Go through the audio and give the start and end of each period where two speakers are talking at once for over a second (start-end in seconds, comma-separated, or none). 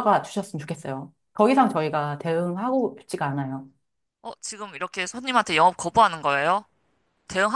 none